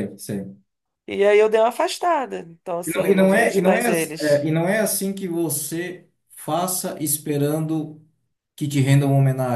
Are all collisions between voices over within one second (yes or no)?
no